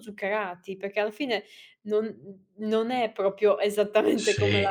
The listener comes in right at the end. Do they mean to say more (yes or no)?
yes